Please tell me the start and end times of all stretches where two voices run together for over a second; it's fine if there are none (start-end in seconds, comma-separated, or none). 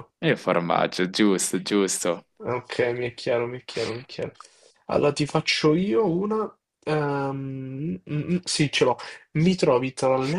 none